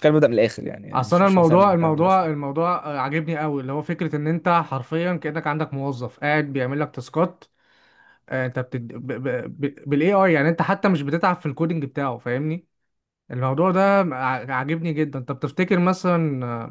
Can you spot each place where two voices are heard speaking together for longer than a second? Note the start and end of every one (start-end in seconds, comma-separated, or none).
0.9-2.2